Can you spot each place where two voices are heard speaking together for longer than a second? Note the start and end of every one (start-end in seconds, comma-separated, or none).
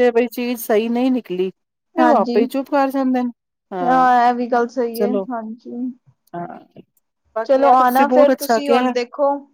7.5-8.9